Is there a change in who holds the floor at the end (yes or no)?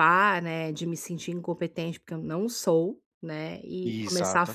no